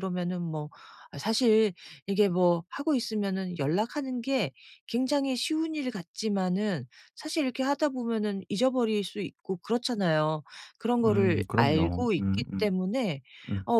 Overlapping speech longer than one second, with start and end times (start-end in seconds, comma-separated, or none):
11.0-12.8